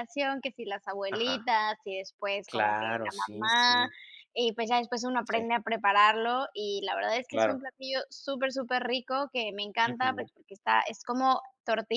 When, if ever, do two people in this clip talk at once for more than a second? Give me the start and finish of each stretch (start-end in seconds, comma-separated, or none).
2.4-3.9